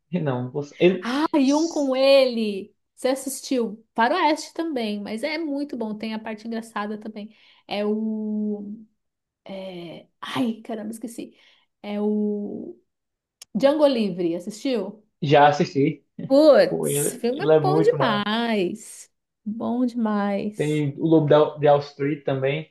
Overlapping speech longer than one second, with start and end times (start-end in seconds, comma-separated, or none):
16.7-18.3